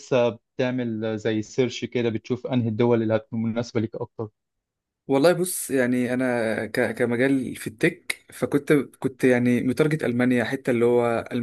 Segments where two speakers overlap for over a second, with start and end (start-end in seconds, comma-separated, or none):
none